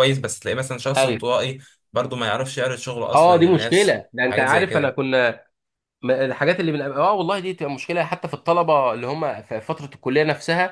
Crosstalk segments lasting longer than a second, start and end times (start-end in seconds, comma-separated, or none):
3.1-4.9